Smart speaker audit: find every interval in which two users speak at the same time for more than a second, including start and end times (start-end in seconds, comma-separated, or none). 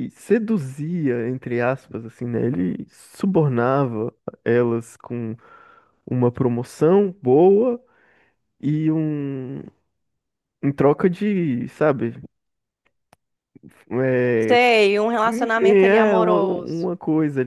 15.2-16.9